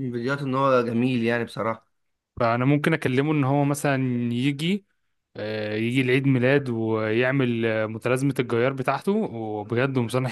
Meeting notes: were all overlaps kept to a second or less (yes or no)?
yes